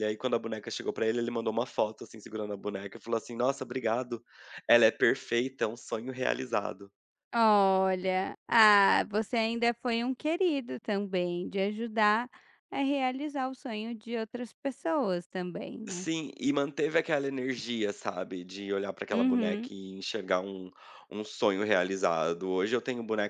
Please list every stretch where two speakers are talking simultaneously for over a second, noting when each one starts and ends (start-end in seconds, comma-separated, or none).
none